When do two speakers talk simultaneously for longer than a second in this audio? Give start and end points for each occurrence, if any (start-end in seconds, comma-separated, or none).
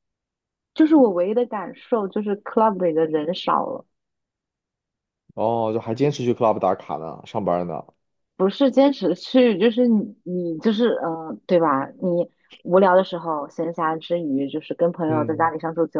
none